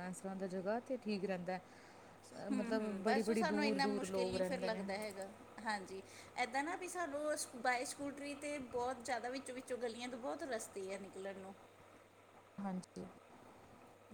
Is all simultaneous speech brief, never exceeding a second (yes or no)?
no